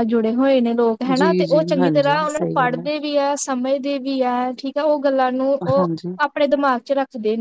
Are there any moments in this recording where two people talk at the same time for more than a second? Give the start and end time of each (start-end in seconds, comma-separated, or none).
1.1-2.8